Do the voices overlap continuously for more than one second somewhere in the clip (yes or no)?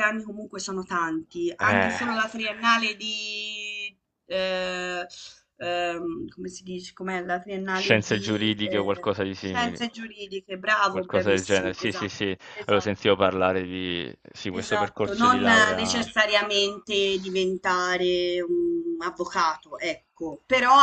yes